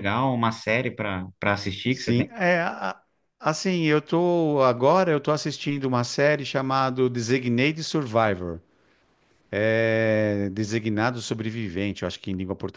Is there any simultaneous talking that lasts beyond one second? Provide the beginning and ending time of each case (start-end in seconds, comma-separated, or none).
none